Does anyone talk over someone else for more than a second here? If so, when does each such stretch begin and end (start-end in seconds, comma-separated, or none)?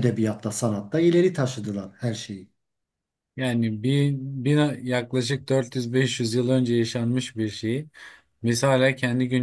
none